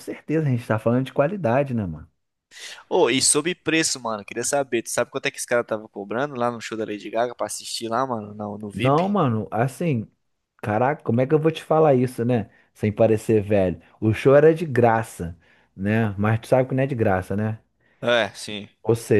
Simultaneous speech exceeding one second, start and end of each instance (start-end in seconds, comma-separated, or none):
none